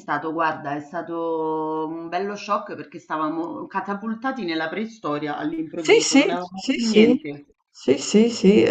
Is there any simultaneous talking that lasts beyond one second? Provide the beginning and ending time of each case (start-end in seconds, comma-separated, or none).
5.8-7.2